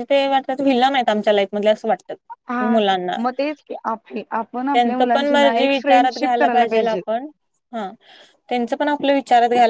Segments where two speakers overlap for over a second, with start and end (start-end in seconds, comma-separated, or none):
4.7-7.0